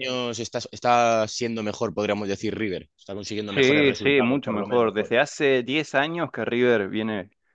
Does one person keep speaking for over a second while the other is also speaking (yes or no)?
yes